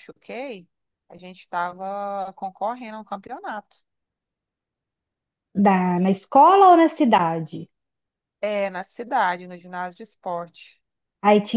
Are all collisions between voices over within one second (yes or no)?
yes